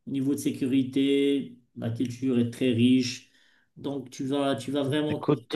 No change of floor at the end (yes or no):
no